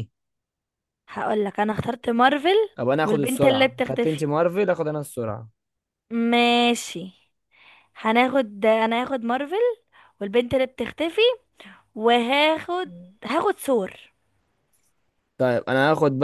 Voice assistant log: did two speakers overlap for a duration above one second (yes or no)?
yes